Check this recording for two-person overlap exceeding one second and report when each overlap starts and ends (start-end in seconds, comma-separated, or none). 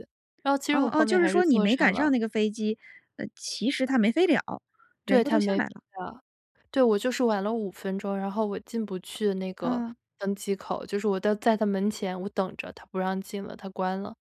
0.7-2.1